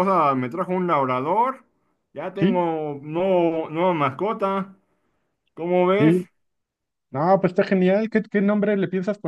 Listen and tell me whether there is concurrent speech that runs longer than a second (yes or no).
no